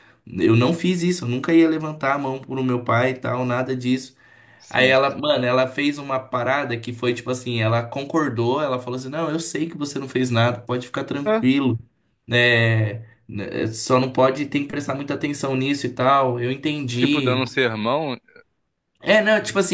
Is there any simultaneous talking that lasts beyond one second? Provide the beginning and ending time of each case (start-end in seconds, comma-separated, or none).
none